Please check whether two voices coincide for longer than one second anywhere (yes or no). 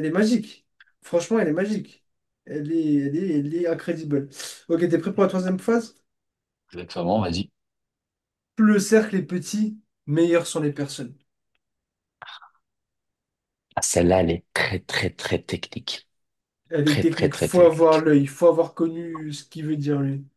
yes